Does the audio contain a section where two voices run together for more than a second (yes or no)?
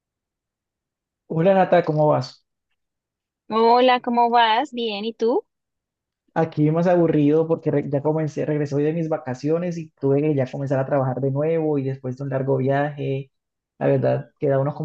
no